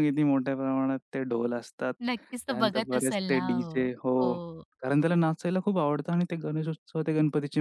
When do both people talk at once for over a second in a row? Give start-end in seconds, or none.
2.3-4.2